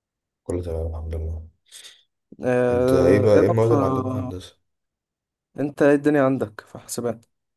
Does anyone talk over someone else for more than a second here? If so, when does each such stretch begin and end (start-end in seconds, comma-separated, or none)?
2.7-4.3